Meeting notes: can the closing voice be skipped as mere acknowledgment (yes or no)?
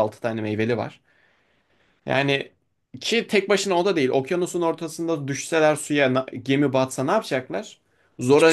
yes